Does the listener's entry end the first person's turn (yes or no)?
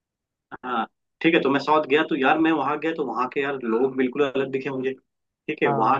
no